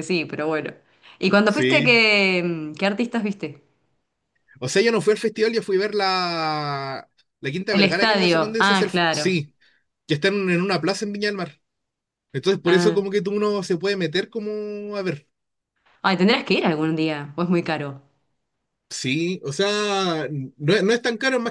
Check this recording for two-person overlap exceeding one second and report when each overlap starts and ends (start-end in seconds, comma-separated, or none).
7.7-9.4